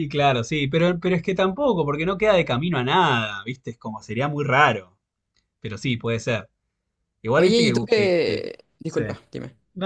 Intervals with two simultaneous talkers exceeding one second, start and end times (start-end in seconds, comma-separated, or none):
7.3-9.0